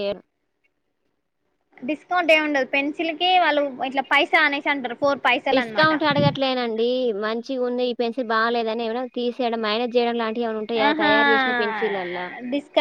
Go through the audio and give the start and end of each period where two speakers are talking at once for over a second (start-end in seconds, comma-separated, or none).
none